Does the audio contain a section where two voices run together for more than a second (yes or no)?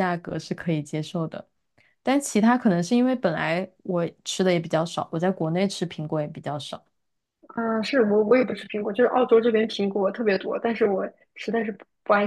no